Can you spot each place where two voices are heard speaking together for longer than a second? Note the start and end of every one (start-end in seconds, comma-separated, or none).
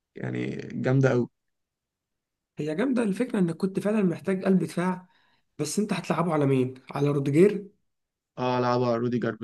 none